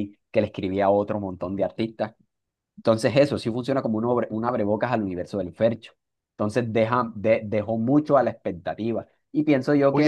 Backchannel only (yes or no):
no